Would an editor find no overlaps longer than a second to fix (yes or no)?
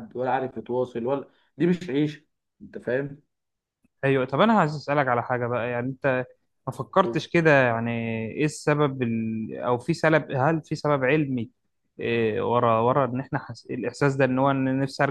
yes